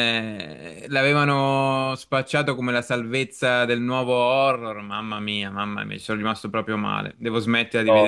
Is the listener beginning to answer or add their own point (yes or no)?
no